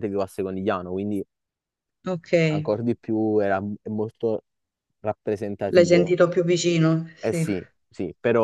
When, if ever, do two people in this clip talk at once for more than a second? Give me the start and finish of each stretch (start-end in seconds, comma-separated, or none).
none